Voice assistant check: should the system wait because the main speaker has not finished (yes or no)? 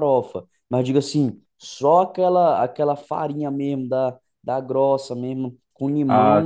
yes